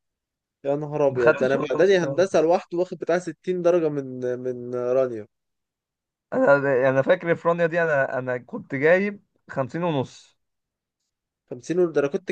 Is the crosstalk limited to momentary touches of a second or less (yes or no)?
no